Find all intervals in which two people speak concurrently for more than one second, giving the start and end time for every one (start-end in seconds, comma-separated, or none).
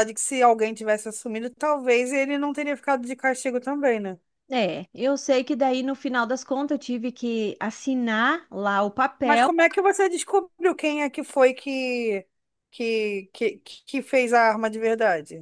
none